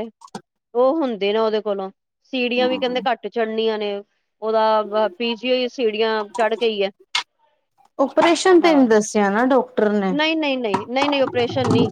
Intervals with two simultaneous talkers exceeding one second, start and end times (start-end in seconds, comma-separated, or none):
none